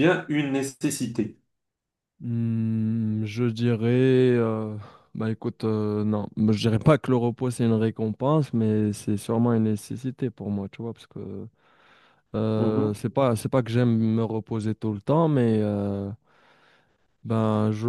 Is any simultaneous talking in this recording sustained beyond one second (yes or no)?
no